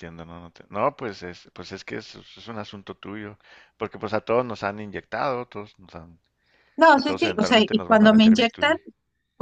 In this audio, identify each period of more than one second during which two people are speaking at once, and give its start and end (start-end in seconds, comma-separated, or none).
6.9-8.8